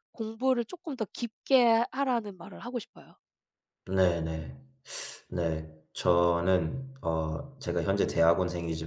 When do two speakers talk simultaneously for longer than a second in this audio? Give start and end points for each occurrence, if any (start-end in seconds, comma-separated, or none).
none